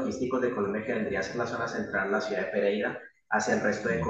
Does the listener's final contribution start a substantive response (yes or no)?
no